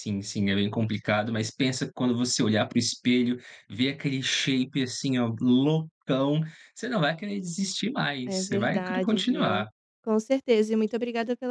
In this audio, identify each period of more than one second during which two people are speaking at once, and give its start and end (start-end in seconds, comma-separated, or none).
8.2-9.7